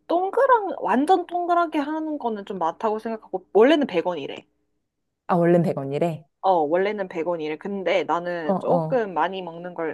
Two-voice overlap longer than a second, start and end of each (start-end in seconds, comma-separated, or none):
none